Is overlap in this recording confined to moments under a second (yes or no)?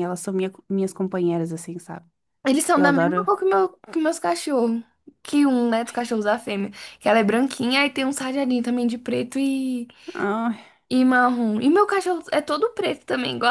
yes